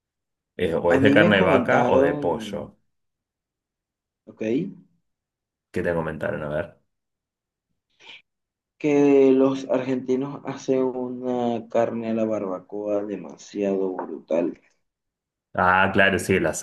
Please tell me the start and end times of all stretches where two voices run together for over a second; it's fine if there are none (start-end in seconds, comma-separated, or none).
0.9-2.8